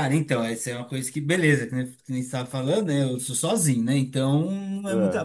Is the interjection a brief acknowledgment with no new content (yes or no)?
yes